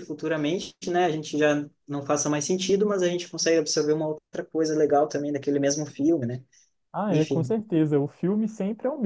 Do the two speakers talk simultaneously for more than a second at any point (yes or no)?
no